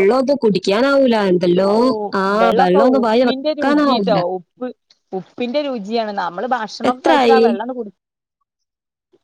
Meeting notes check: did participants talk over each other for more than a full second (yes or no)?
yes